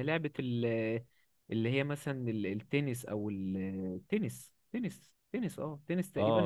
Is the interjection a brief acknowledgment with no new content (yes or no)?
no